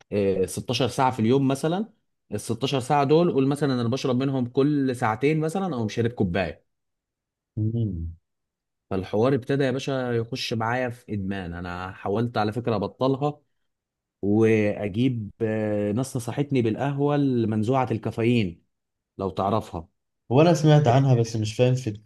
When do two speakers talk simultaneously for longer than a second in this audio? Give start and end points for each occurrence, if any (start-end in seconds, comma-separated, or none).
none